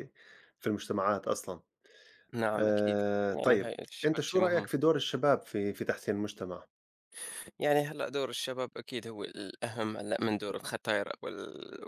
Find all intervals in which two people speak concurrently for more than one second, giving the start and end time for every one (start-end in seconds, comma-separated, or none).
2.6-4.7